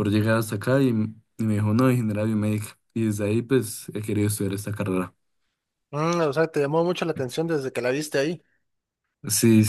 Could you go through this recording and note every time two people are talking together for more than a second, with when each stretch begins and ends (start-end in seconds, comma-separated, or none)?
none